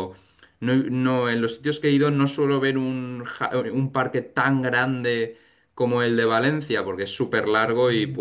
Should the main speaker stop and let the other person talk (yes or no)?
no